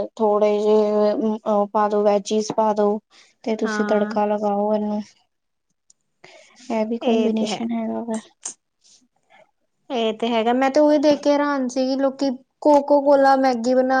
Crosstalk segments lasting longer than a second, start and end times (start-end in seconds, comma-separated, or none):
none